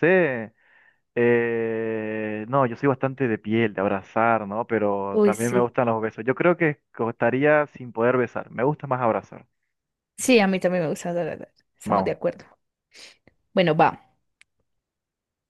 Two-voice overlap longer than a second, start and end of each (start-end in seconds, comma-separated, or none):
none